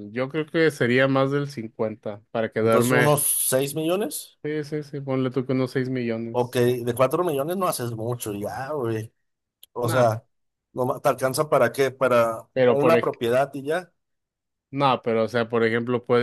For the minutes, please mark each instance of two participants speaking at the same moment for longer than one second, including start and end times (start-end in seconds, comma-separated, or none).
none